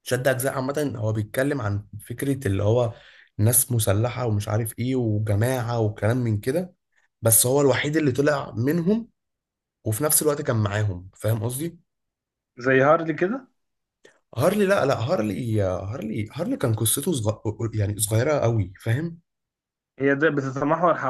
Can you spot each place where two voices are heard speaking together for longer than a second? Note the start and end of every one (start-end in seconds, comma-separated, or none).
none